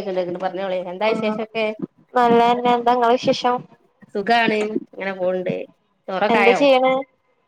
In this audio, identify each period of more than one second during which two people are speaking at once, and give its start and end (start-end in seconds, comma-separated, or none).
none